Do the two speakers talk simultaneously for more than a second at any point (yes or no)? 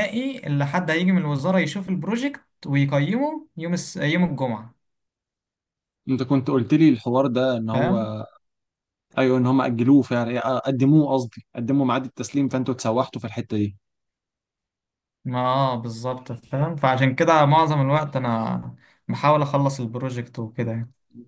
no